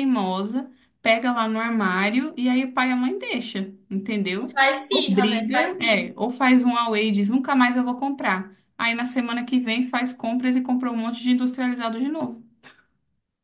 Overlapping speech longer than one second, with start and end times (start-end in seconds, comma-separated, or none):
4.5-6.1